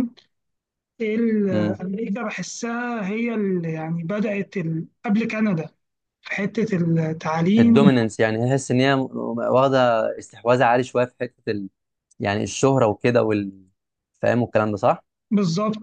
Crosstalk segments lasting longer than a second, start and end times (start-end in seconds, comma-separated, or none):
none